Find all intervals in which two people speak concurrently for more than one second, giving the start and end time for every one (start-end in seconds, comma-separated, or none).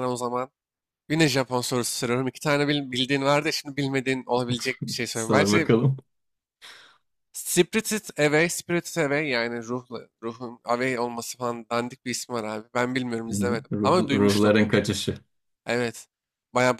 13.3-14.6